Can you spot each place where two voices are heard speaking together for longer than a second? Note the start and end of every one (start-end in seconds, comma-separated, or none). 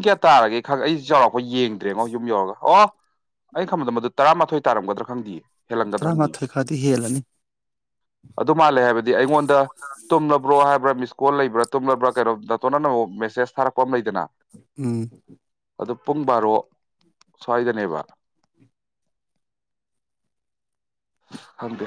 none